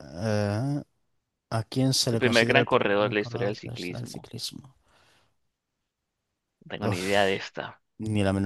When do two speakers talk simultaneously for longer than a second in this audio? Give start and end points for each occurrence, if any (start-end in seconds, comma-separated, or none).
2.1-4.3